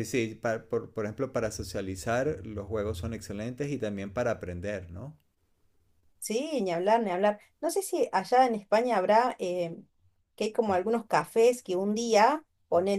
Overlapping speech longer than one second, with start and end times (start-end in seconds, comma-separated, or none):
none